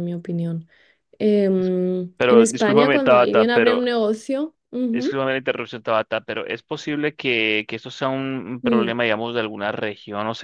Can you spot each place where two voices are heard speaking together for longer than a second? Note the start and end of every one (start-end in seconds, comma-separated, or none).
2.2-3.8